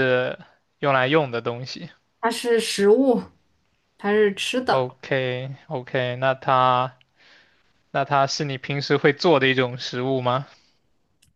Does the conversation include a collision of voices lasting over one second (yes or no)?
no